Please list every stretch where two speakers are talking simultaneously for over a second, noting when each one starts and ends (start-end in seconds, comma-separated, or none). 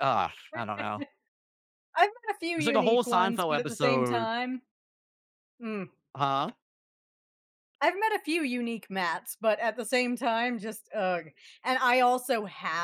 2.6-4.3